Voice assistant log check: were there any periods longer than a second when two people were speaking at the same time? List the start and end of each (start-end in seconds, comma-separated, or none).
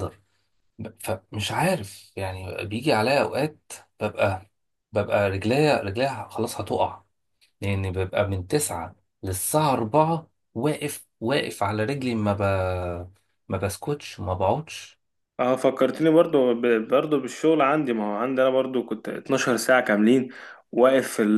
none